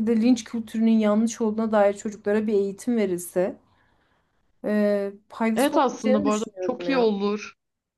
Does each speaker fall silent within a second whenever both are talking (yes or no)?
no